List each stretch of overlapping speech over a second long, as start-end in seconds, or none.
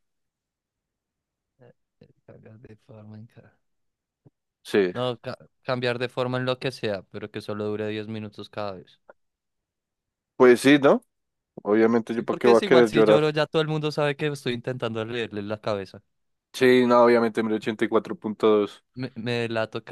12.1-13.3